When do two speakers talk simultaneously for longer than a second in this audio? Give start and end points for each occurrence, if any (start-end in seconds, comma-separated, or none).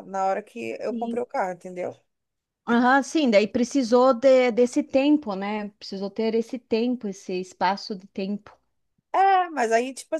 none